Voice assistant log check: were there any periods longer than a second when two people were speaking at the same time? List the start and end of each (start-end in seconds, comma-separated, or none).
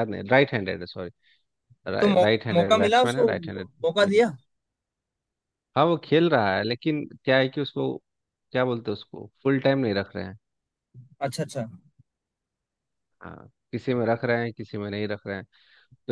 2.2-4.2